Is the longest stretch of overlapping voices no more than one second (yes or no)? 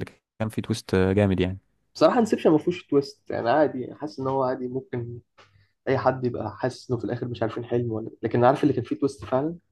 yes